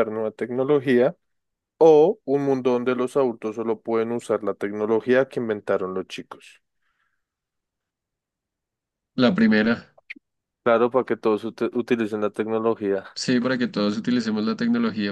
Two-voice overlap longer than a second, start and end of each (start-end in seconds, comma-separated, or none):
none